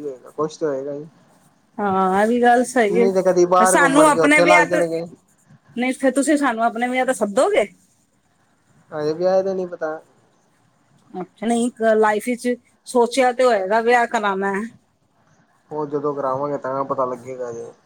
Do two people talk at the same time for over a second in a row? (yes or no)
yes